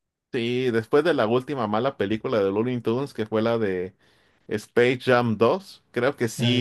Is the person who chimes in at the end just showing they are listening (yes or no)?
yes